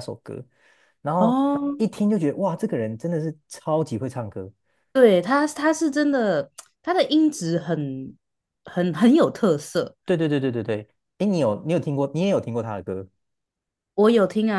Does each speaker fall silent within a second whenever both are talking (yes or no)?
yes